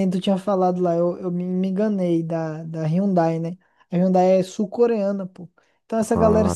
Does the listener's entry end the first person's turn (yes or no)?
no